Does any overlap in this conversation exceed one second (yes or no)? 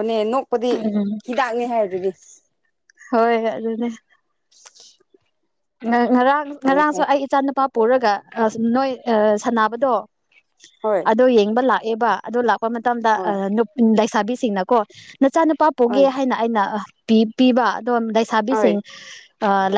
no